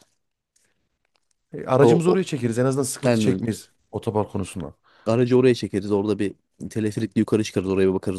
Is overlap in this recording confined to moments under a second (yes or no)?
yes